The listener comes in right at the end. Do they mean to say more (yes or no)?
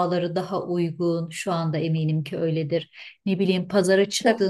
no